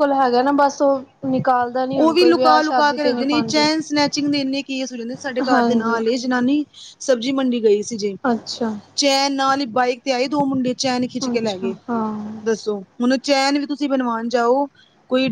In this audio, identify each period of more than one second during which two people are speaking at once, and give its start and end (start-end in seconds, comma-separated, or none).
2.0-3.7